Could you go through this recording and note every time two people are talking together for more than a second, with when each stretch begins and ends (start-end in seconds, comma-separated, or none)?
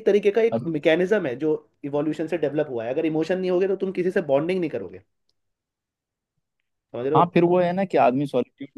none